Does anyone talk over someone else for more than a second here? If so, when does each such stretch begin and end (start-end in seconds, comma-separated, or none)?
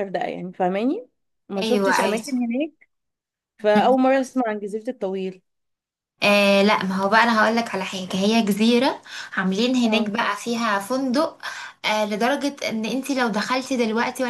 none